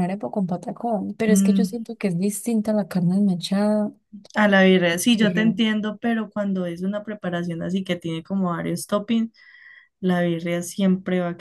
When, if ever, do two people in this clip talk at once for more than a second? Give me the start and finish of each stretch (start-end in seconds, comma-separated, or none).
none